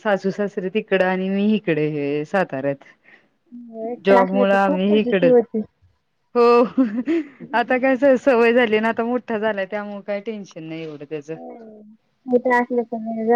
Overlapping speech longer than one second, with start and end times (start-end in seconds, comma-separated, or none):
4.0-5.3